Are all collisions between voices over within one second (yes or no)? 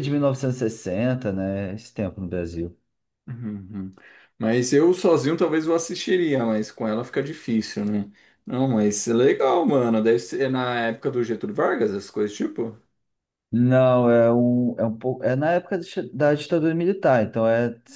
yes